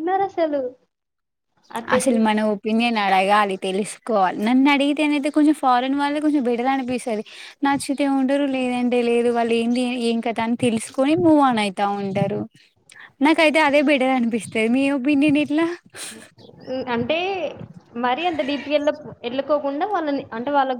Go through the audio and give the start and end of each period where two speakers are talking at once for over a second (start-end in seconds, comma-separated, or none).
none